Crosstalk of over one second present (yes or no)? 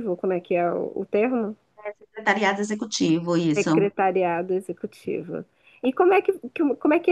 no